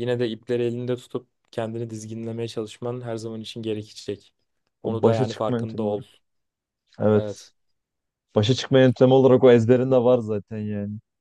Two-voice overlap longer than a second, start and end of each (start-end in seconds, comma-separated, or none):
4.8-6.0